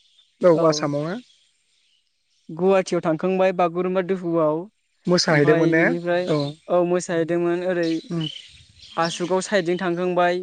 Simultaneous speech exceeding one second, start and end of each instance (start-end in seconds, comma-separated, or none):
none